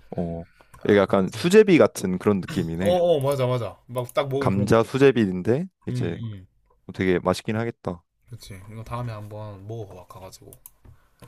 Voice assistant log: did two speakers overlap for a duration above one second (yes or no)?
no